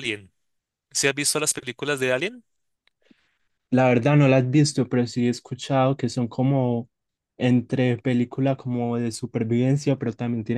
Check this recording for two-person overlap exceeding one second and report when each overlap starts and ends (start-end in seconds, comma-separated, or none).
none